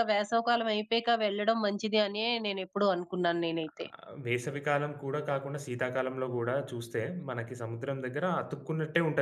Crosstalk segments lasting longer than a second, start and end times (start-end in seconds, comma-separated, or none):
none